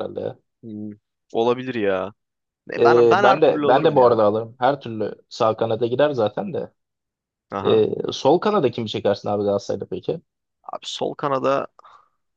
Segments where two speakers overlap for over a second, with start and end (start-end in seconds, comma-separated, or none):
2.8-4.2